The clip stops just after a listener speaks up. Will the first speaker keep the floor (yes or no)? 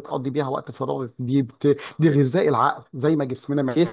yes